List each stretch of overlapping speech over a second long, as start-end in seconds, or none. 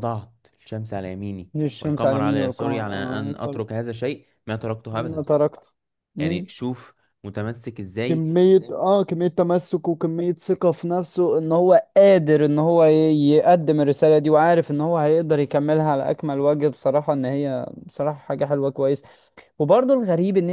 1.5-3.6